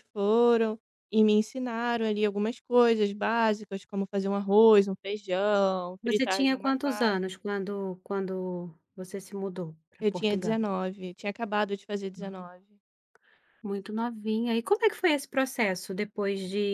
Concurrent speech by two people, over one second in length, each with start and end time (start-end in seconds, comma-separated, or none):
6.0-7.4